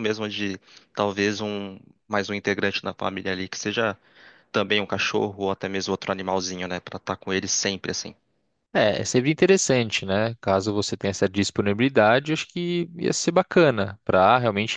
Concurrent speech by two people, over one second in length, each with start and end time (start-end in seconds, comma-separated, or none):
none